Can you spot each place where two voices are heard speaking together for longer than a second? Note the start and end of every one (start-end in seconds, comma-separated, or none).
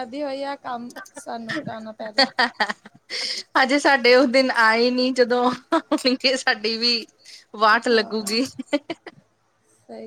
none